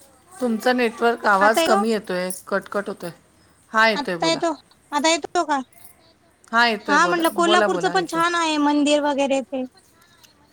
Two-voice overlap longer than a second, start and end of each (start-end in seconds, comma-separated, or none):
6.9-8.2